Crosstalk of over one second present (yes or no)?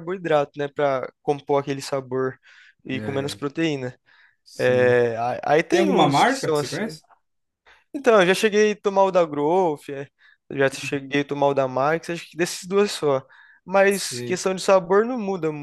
yes